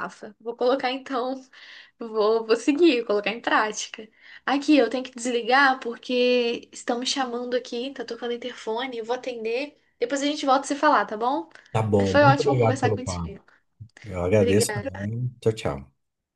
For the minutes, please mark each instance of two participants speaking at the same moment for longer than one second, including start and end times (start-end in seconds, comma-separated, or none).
12.0-13.3